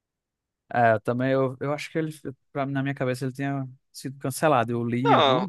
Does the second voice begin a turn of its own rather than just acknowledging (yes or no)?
yes